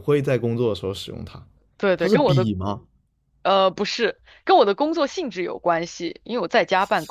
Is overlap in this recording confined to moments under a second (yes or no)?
yes